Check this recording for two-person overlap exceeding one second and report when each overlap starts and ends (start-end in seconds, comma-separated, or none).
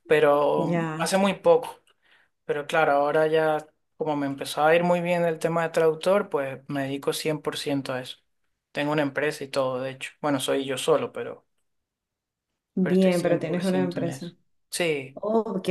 12.8-14.3